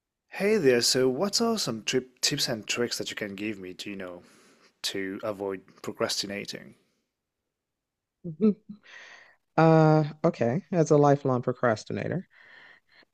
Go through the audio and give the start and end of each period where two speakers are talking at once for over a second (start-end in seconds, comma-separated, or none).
none